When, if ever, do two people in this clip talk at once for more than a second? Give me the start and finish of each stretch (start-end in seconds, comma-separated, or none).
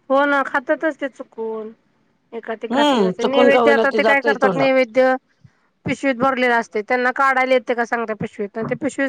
2.7-4.7